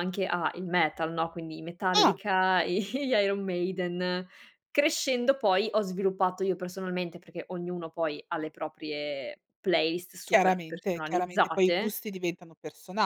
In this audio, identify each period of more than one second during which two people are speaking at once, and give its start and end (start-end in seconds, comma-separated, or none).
10.3-11.9